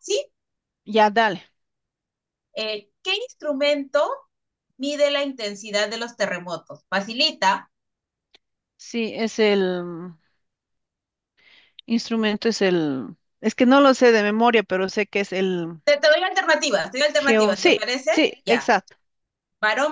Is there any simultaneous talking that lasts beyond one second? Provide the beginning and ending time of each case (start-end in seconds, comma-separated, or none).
17.1-18.7